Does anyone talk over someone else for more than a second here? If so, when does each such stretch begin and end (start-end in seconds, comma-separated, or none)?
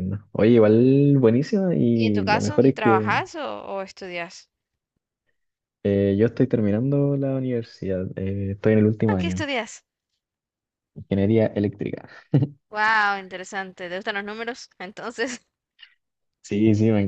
1.9-3.1